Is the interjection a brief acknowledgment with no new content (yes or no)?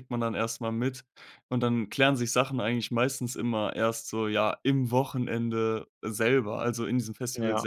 yes